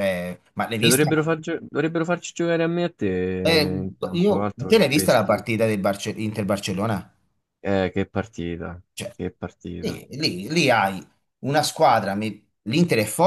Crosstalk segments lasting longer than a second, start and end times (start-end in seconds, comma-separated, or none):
3.4-5.5